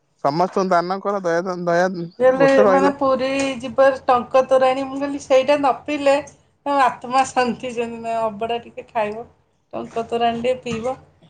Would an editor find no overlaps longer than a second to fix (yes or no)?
yes